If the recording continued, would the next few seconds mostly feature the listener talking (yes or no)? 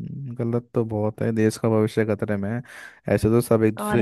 no